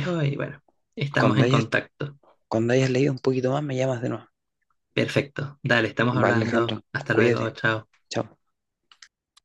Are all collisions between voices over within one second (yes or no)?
no